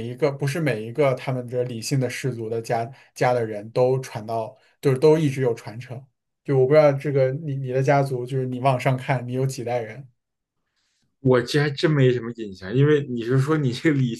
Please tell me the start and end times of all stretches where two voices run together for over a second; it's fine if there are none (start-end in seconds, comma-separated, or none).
none